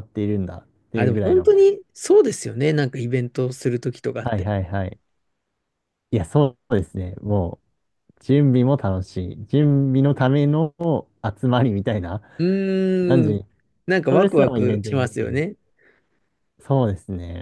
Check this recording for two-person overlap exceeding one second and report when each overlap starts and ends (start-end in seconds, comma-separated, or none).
14.1-15.4